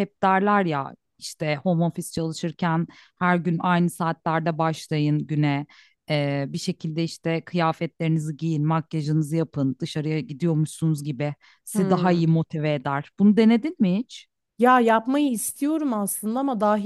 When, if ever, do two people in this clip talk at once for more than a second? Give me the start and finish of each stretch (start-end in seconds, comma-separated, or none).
none